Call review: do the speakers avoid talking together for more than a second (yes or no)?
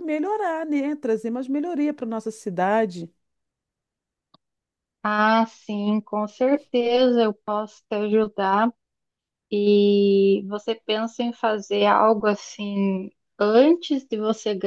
yes